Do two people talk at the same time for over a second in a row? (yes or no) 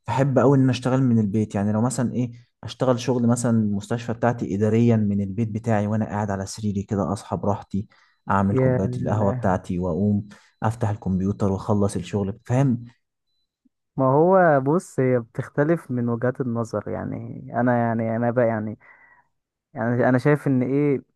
no